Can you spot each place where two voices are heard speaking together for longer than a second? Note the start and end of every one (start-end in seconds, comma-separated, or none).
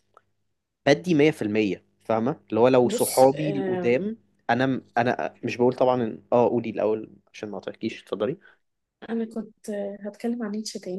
2.8-4.0